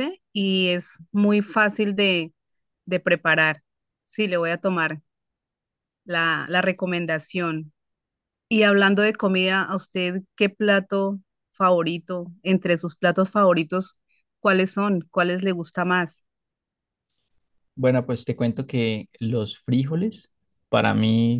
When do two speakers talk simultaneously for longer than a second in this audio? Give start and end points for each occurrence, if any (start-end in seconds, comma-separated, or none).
none